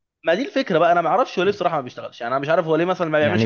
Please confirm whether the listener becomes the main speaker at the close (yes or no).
yes